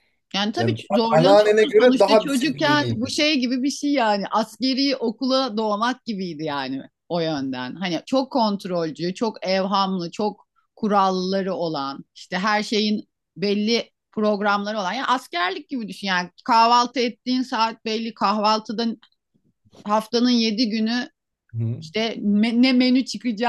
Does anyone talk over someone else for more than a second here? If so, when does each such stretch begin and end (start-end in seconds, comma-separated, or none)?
0.6-3.1